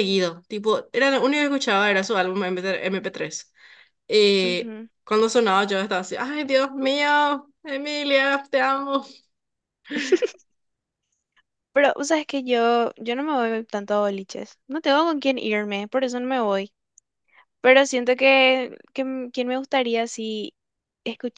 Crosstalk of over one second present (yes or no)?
no